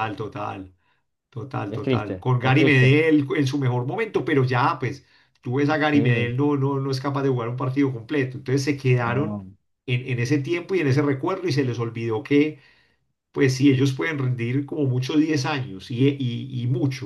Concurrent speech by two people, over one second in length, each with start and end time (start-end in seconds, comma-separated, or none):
1.7-2.9